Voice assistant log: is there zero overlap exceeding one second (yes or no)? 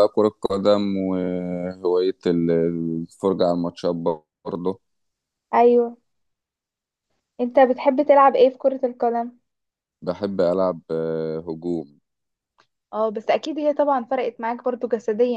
yes